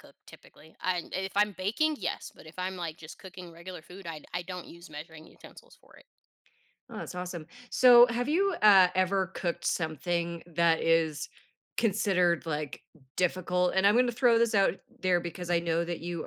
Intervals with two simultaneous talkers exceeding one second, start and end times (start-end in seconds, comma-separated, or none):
none